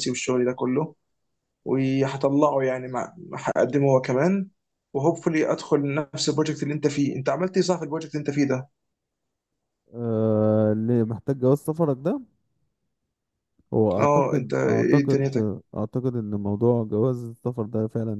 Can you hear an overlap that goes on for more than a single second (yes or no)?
yes